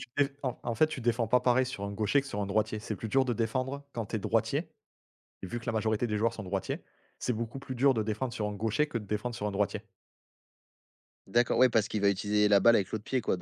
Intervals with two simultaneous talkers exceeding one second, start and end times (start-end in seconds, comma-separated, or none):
none